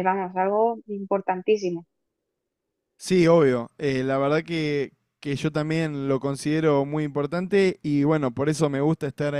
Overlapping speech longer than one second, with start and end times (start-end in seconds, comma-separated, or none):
none